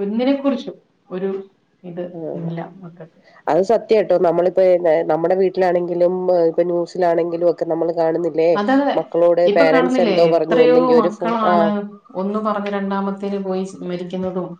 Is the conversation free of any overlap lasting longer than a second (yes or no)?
no